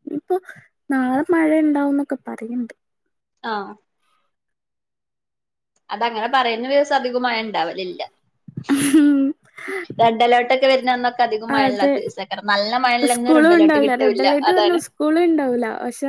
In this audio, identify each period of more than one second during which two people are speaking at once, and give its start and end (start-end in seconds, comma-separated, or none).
13.1-14.8